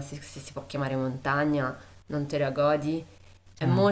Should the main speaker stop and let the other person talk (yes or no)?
no